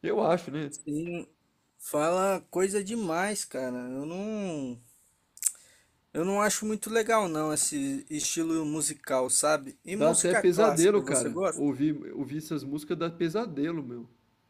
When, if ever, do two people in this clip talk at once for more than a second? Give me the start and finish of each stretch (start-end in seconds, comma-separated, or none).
9.9-11.7